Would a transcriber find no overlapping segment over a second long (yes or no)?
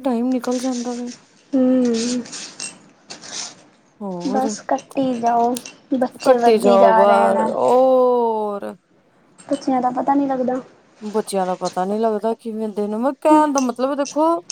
no